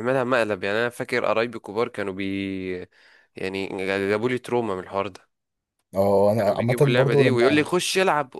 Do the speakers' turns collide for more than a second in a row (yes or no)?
yes